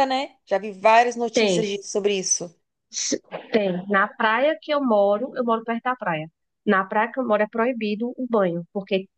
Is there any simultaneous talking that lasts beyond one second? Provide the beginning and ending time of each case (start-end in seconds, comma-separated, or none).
none